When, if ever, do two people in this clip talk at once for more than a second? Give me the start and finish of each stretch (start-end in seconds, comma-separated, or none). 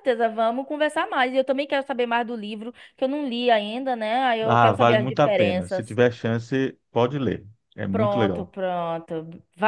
4.4-6.0